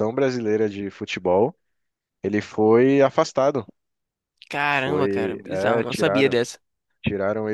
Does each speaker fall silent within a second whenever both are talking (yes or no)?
no